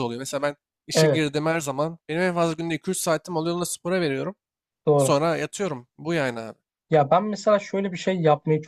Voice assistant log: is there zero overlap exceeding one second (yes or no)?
yes